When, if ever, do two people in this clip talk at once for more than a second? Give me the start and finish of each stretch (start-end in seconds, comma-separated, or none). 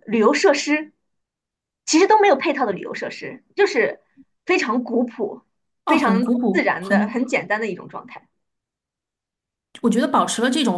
5.9-7.2